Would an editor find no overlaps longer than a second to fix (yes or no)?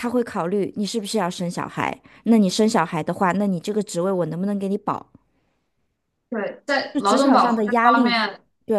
no